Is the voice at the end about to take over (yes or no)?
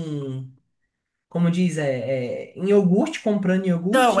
yes